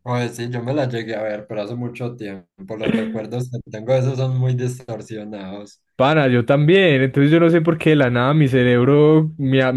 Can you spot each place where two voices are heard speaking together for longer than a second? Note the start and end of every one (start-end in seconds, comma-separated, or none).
none